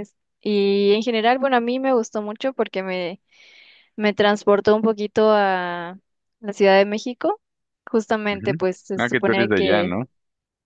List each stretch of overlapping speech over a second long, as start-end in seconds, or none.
8.3-9.9